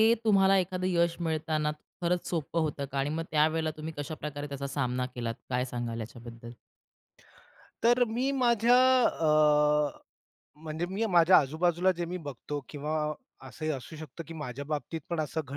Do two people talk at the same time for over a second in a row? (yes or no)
no